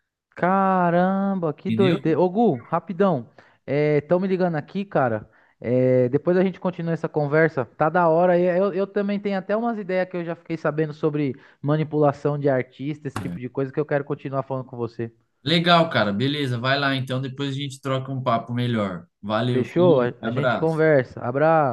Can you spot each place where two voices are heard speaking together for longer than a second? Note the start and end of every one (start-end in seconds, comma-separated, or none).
19.5-20.8